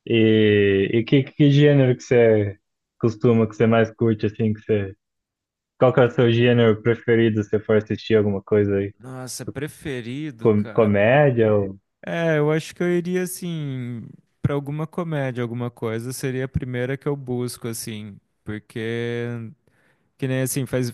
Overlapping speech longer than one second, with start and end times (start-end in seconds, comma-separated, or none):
none